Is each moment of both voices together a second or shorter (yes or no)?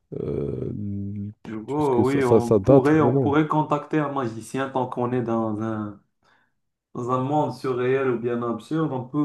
no